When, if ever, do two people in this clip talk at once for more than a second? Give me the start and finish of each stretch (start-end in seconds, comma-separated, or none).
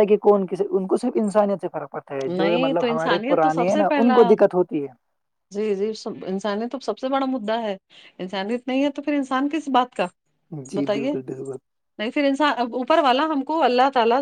2.3-4.1